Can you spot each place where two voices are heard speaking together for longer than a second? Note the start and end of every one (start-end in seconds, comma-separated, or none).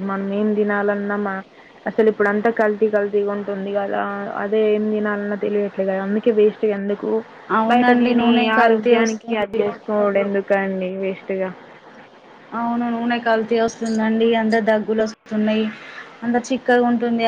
7.7-9.6